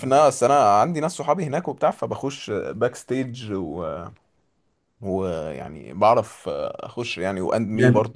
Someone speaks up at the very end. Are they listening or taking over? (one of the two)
taking over